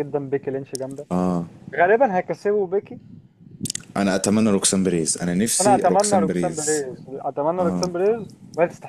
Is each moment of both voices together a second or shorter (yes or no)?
no